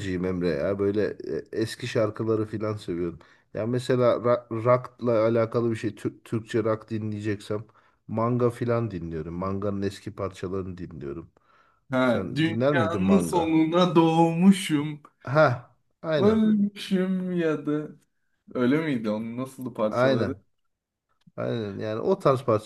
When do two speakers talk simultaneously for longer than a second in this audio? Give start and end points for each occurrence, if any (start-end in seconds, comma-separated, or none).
12.0-13.5